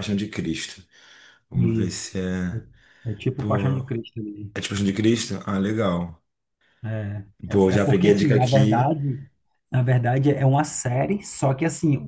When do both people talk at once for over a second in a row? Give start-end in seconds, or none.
7.5-8.9